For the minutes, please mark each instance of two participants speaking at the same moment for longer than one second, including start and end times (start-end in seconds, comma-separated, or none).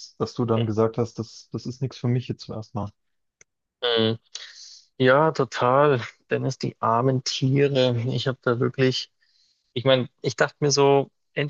none